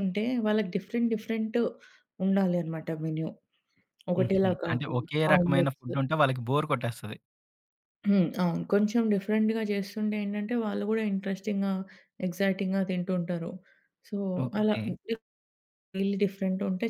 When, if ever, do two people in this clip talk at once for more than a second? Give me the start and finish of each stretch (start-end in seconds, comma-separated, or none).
4.2-5.9